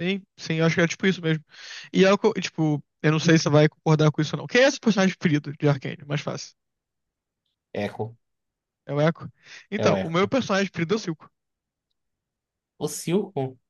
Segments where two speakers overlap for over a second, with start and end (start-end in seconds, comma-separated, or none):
none